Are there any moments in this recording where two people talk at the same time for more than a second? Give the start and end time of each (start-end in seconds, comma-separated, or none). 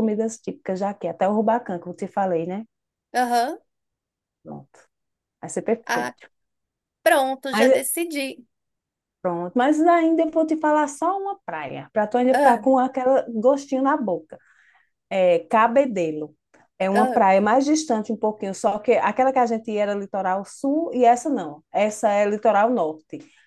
none